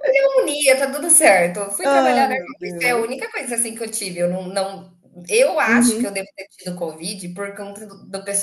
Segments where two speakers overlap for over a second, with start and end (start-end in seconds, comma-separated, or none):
1.8-3.2